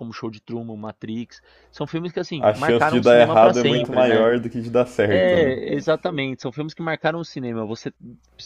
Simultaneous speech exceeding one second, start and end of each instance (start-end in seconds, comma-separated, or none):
2.4-4.3